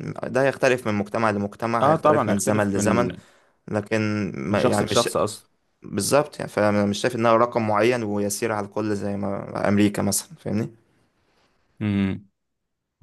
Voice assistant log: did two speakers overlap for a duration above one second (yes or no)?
yes